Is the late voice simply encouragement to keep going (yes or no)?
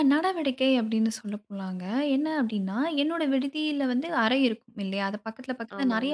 yes